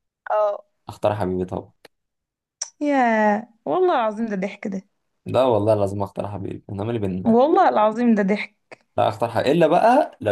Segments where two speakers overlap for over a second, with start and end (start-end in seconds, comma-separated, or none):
none